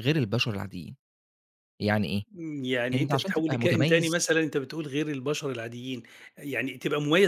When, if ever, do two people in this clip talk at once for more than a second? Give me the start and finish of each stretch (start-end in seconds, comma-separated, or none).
2.9-4.1